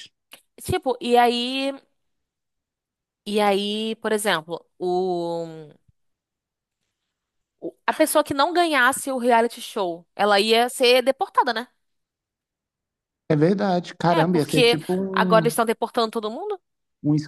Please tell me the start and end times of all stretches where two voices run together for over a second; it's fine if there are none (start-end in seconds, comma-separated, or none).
14.1-15.6